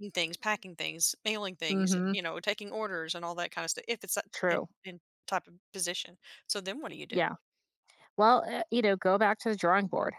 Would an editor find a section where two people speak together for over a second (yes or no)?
no